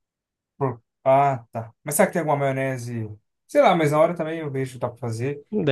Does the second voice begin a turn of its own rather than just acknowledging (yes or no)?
yes